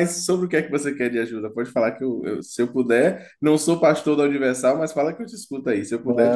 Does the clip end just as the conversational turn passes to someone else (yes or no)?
yes